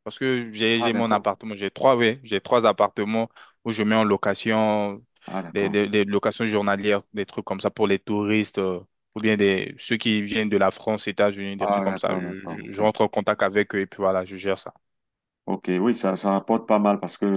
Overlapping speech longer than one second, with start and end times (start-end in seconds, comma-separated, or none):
11.6-12.9